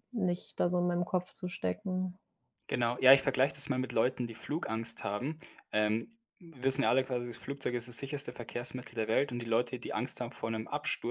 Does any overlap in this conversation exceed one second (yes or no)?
no